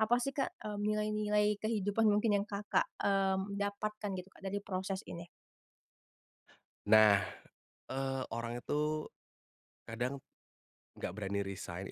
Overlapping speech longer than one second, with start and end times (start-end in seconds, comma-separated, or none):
none